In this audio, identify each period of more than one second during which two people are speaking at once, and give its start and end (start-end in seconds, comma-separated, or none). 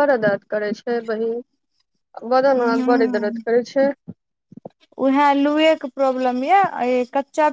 none